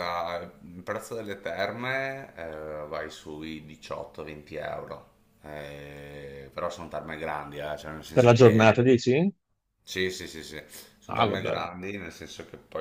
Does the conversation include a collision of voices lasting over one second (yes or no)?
no